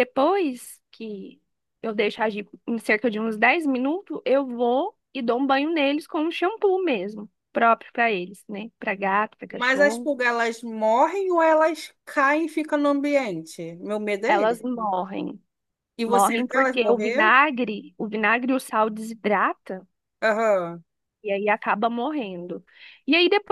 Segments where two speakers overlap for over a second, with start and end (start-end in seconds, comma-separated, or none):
16.1-17.3